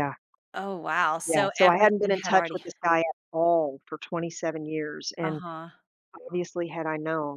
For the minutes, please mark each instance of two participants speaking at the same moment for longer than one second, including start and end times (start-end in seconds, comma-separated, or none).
1.3-2.6